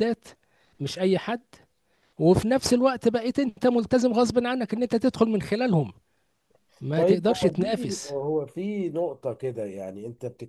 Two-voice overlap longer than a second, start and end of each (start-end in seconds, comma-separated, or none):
6.9-8.1